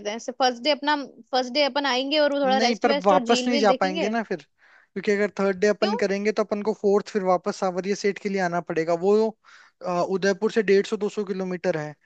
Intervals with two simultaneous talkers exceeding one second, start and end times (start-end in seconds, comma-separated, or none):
2.4-4.1